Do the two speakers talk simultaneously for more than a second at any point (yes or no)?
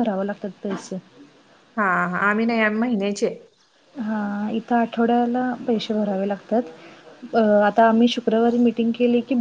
no